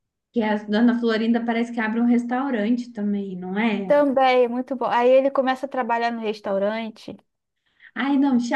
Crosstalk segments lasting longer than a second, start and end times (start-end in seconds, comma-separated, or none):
none